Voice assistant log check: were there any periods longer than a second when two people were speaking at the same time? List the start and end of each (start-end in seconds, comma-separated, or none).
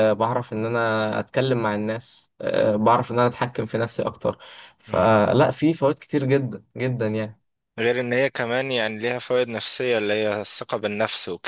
none